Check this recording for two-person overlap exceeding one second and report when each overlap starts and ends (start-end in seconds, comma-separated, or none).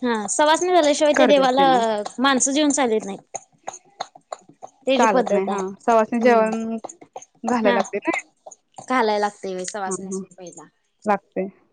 5.0-6.4